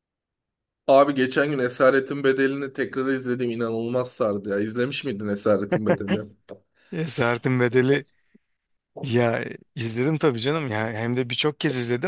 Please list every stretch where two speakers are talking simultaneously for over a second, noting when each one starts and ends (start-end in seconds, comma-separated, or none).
none